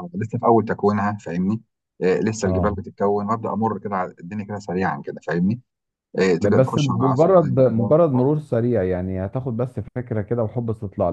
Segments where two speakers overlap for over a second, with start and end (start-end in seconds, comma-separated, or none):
6.4-7.9